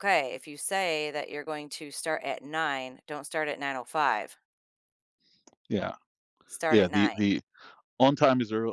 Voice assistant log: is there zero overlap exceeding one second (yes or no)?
yes